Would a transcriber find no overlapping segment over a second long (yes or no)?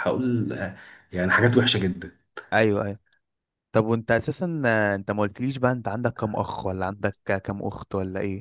yes